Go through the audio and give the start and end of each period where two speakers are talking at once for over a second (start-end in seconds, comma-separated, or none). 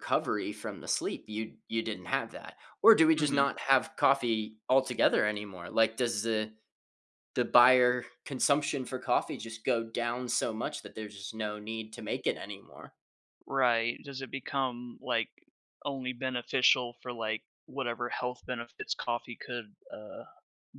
none